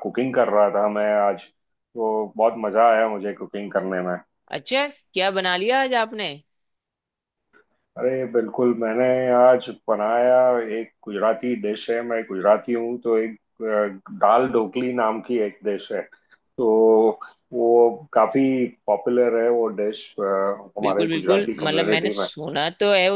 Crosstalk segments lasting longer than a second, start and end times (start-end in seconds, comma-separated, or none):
20.8-22.3